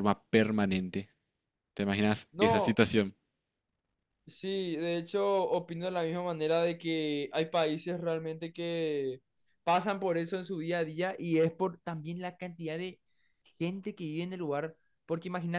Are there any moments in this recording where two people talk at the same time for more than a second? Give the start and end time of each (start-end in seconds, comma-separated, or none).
none